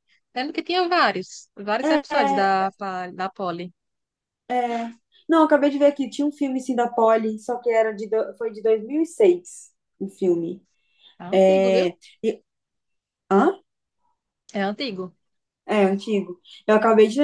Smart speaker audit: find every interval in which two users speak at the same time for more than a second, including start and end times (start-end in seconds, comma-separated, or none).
none